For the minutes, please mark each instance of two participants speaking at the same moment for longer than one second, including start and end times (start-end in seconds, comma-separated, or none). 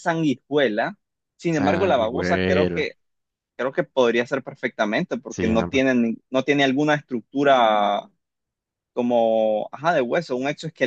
1.5-2.9